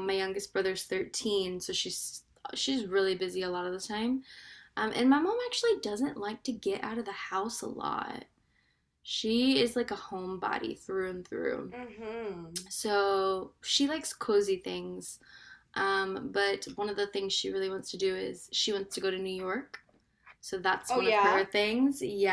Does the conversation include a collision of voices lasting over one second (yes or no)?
no